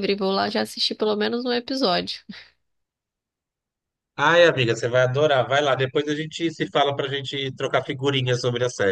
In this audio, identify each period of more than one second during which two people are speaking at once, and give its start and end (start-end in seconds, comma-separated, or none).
none